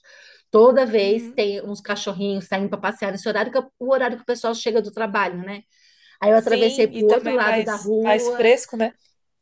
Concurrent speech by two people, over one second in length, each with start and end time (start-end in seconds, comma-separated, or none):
6.3-8.5